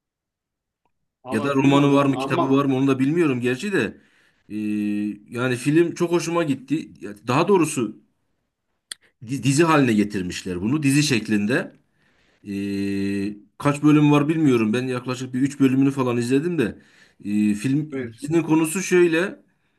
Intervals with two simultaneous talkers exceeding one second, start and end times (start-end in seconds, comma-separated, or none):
1.3-2.6